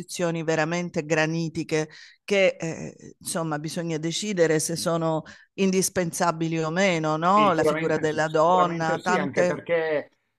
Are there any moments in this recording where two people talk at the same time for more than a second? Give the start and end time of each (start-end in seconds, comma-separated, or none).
7.3-9.6